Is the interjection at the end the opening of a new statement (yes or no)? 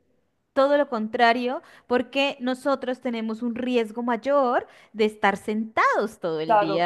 yes